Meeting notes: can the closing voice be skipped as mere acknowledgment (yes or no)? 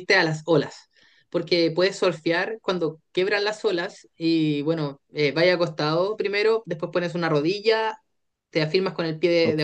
yes